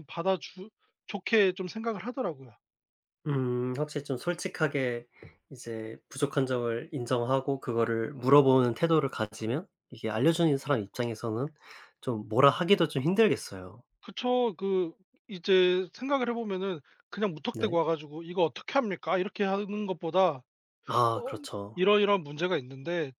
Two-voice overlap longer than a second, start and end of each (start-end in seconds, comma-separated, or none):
none